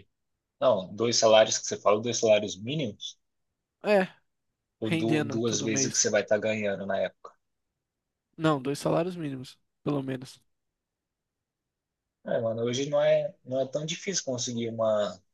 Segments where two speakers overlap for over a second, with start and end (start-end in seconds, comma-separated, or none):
4.8-6.0